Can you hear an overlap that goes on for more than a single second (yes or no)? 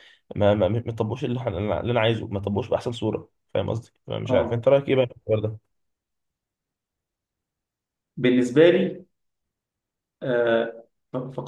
no